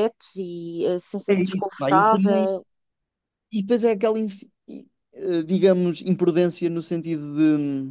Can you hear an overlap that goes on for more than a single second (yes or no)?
yes